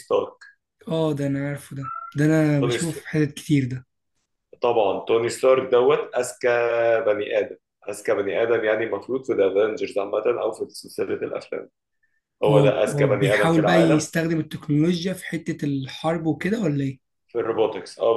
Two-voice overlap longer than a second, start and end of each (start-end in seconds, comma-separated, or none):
12.5-14.1